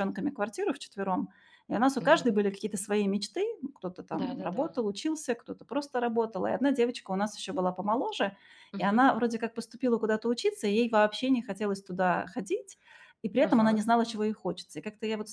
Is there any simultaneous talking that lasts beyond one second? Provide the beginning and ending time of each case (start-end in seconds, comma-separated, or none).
none